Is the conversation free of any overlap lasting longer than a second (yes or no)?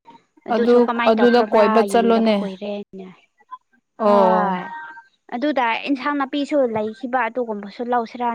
no